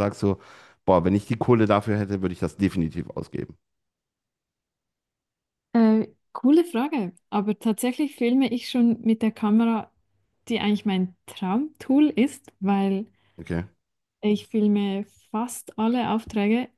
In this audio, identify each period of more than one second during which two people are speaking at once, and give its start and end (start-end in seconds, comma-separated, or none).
none